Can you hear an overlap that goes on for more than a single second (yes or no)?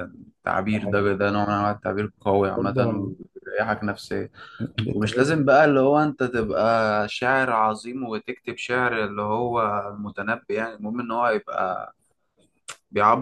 no